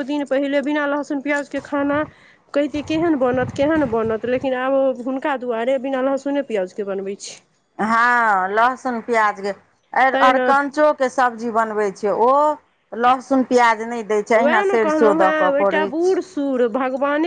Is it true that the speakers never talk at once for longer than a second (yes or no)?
yes